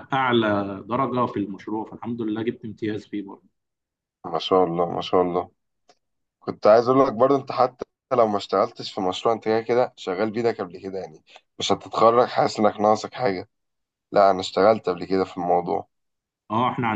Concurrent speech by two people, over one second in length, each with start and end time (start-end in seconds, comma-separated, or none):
none